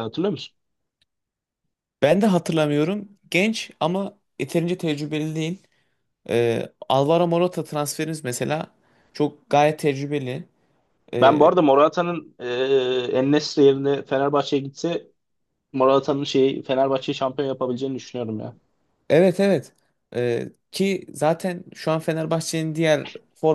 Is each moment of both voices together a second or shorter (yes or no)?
yes